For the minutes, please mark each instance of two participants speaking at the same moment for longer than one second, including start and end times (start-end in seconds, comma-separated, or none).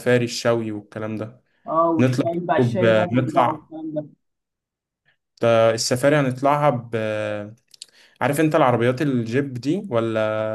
2.0-3.7